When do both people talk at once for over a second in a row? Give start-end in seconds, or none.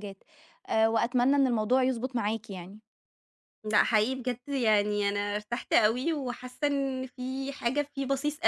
none